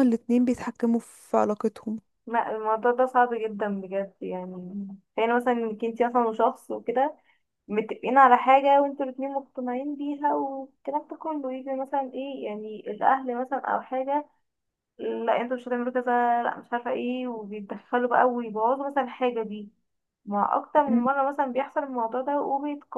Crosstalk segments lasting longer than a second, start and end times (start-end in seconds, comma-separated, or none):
none